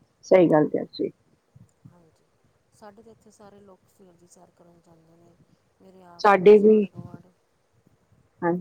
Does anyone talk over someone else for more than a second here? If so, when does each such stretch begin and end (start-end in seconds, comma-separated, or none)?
none